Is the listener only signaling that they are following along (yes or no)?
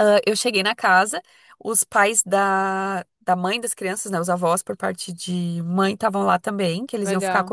yes